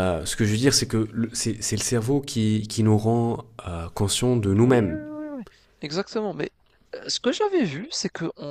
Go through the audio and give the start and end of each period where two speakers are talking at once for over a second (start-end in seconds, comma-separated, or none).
none